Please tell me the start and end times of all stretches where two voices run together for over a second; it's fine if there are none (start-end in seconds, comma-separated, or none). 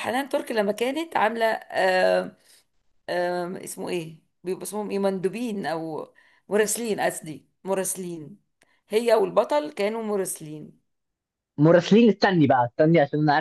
none